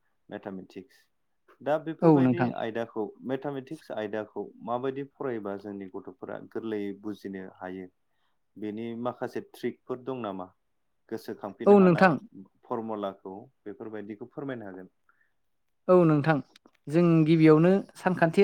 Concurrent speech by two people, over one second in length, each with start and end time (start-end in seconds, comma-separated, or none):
none